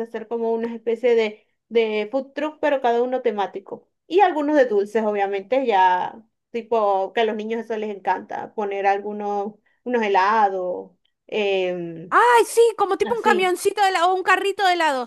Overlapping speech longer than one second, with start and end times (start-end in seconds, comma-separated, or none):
none